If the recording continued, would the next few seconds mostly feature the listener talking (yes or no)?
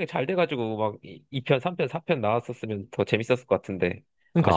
yes